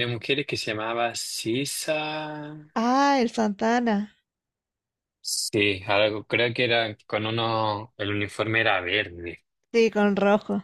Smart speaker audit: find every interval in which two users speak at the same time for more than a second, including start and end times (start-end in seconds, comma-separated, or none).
none